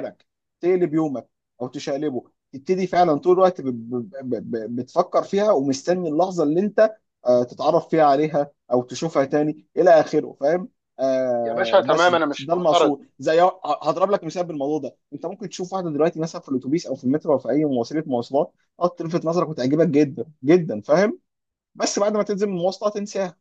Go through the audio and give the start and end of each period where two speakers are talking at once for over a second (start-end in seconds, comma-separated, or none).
11.4-13.0